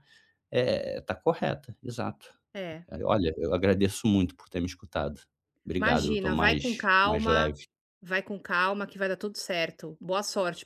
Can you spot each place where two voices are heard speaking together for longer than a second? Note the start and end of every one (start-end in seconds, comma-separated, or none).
5.8-7.5